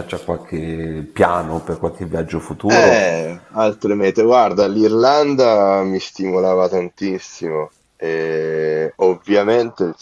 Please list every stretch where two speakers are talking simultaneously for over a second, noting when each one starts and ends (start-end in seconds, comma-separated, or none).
none